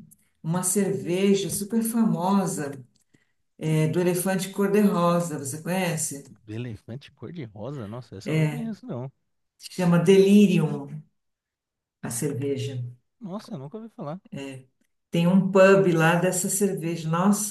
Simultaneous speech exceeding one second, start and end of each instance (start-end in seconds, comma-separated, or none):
none